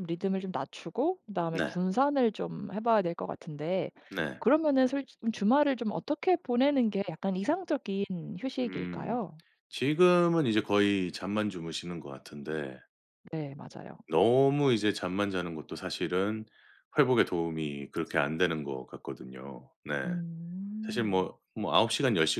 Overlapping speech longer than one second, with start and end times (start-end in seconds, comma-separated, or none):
none